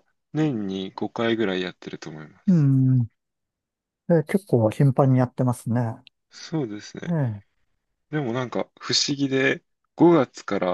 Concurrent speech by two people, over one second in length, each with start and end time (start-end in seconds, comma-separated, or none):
none